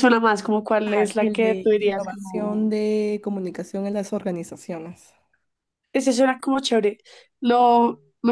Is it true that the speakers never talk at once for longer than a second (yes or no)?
no